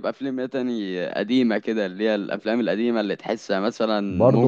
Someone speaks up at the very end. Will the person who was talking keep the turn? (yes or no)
no